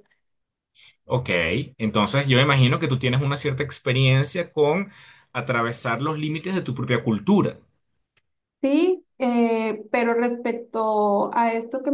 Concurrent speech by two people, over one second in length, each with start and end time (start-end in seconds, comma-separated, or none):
none